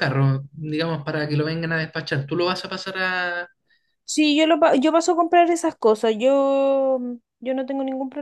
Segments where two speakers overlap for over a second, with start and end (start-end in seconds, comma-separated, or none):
none